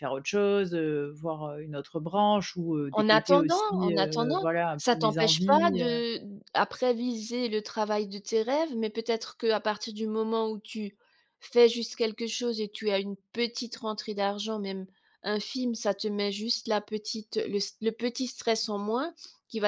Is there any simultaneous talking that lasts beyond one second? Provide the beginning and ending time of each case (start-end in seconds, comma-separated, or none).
2.9-6.0